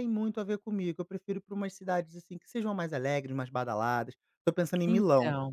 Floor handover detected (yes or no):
no